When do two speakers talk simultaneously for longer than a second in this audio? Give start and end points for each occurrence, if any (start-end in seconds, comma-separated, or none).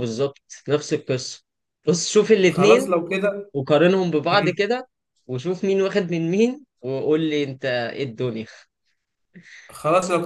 none